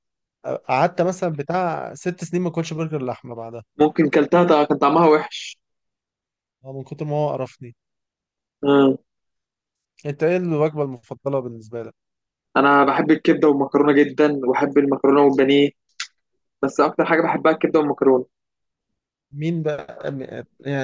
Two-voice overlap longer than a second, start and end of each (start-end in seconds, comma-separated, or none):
none